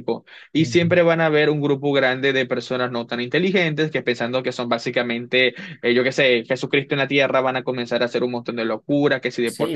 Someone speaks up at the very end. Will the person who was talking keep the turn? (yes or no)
no